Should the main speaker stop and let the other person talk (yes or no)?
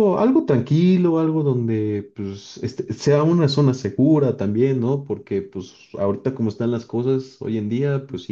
no